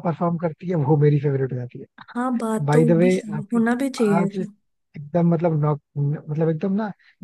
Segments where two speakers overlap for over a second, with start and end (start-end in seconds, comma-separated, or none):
2.6-4.4